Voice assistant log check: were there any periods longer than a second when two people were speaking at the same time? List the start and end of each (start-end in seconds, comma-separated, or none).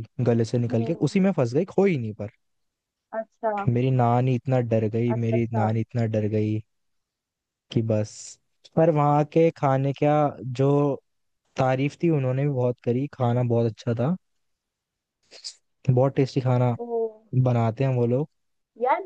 none